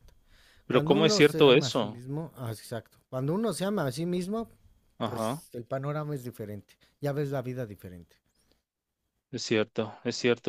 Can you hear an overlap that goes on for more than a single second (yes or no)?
yes